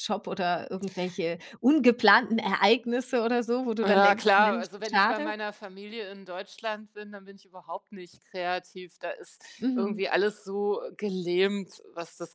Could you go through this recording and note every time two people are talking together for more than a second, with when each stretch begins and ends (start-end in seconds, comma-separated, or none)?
3.8-5.3